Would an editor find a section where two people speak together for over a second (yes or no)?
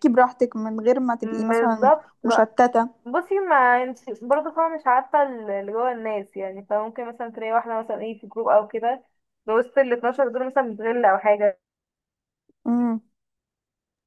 yes